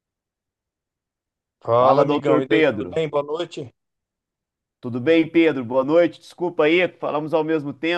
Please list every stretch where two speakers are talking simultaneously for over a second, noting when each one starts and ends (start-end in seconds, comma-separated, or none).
1.8-3.0